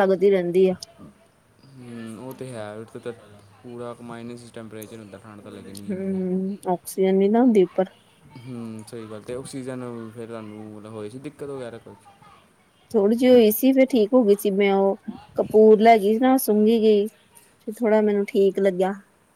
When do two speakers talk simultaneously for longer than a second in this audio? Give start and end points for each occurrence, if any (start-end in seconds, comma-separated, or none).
none